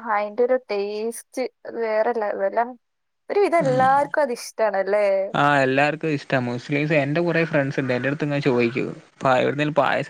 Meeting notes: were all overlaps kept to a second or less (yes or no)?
yes